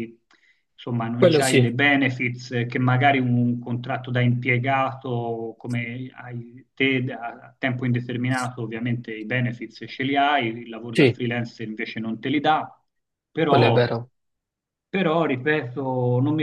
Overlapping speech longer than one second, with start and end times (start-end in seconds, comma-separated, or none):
none